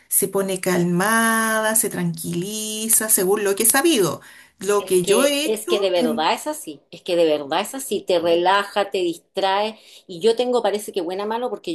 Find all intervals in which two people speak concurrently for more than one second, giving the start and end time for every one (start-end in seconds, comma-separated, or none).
4.8-6.2